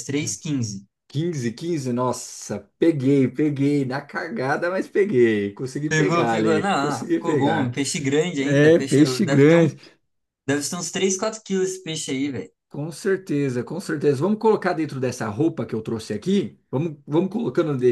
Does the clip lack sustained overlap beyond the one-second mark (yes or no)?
no